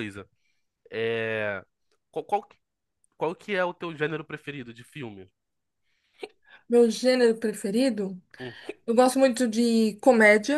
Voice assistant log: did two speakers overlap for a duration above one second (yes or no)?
no